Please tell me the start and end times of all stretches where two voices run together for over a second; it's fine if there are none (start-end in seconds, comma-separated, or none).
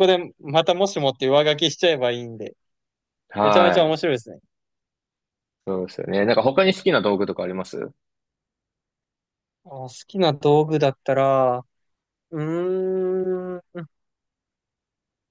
none